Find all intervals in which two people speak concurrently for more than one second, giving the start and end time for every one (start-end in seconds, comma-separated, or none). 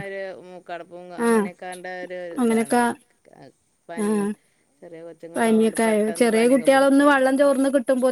5.4-7.4